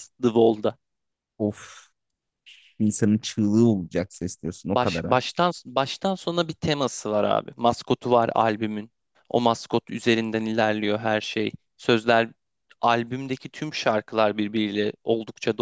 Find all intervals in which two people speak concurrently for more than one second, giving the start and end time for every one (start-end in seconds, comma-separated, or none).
none